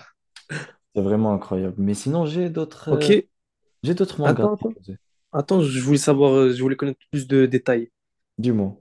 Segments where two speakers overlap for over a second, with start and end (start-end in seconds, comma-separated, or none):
none